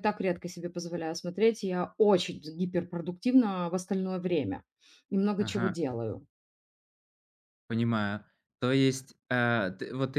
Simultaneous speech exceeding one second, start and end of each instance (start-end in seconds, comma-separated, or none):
none